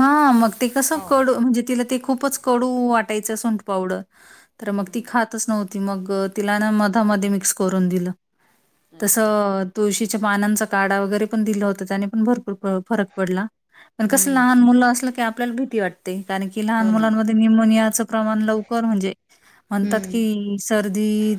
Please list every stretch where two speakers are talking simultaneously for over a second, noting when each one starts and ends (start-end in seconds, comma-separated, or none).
none